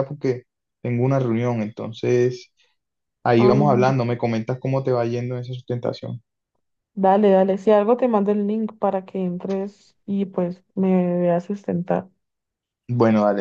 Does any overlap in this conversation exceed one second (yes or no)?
no